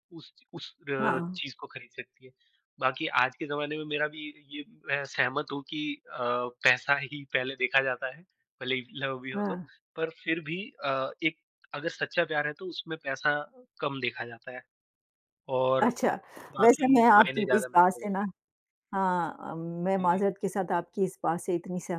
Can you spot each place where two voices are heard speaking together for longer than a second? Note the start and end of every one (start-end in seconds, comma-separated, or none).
16.6-18.2